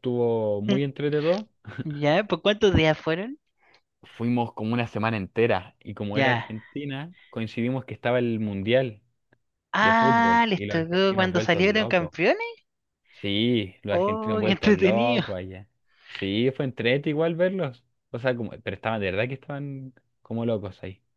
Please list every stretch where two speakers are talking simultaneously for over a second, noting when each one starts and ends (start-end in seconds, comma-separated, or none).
9.8-12.1, 13.9-15.2